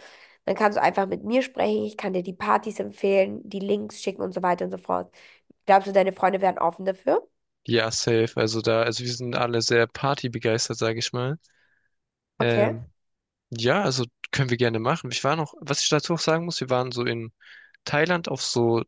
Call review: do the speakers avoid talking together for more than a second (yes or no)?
yes